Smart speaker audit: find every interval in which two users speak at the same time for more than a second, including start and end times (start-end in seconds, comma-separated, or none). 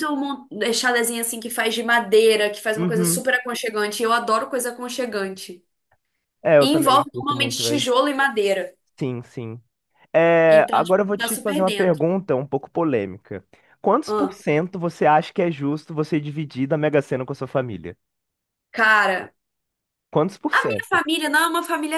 6.6-7.9, 10.5-12.0